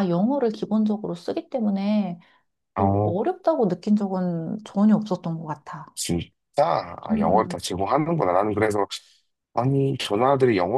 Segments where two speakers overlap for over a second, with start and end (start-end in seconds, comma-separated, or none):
none